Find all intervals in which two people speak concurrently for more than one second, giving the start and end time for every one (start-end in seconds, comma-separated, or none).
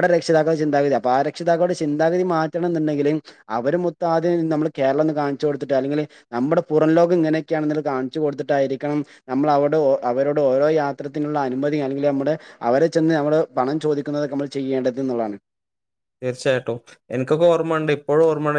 none